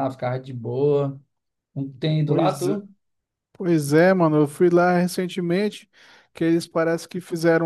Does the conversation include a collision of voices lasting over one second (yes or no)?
no